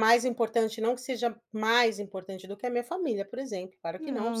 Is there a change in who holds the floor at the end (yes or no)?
no